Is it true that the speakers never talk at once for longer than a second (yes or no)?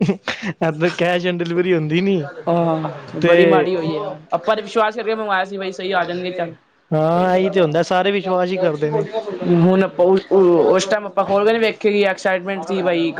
yes